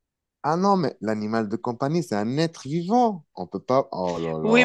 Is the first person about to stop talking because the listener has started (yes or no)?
yes